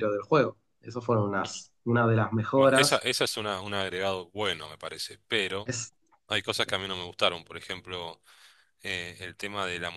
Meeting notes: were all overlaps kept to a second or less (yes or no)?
yes